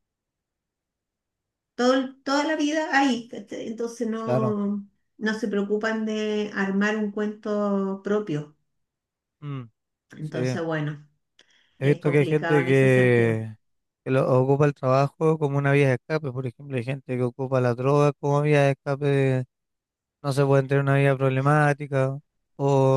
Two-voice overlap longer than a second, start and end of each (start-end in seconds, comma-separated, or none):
11.8-13.4